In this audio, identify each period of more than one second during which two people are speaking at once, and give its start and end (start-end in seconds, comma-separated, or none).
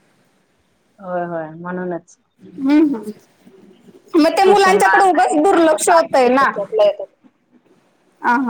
4.4-6.5